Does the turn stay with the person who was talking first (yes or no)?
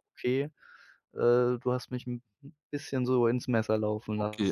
no